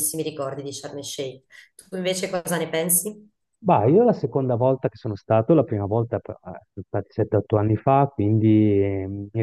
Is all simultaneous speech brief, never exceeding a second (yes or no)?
yes